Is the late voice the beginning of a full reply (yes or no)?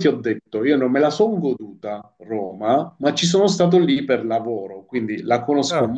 no